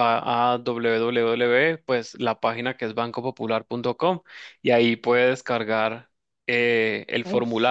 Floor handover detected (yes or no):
no